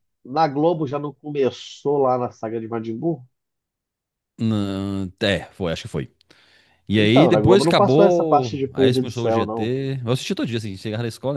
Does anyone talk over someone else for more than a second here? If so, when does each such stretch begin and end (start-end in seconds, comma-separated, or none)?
7.0-9.7